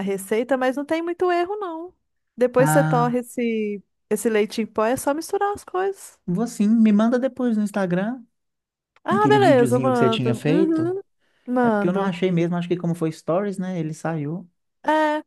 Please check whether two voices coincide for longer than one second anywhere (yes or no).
yes